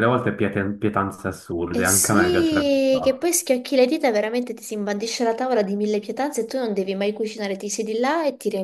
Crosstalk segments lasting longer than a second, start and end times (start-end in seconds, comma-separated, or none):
1.7-3.3